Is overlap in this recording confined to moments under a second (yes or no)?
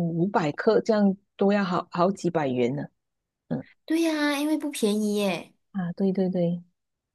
yes